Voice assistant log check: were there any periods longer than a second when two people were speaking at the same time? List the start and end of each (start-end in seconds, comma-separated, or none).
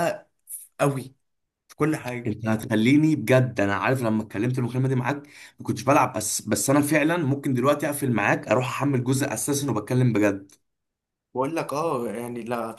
none